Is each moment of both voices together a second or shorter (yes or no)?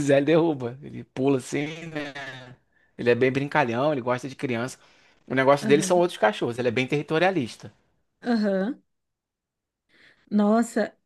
yes